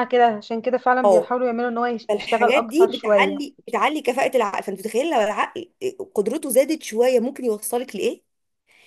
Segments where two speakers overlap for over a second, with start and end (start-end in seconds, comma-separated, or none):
2.1-3.4